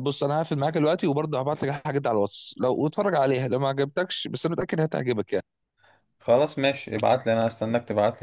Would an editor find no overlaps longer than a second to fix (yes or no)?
yes